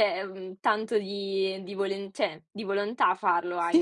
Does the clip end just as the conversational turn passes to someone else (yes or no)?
yes